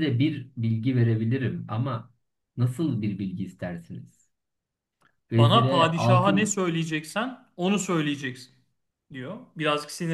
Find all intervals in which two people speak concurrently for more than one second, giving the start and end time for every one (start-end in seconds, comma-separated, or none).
5.4-6.6